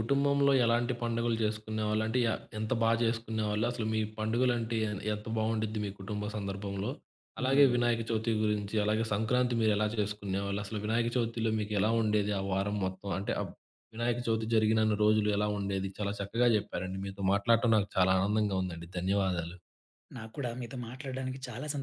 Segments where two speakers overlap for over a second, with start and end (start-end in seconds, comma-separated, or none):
none